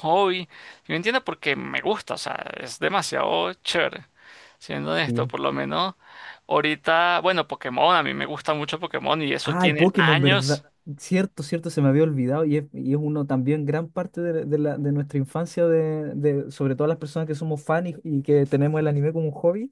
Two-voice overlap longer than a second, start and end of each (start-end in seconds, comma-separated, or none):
9.4-10.6